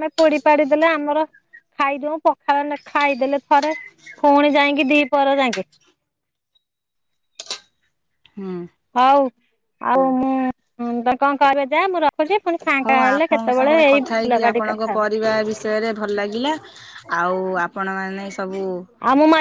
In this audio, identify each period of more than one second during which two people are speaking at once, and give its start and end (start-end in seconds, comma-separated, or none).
12.8-15.1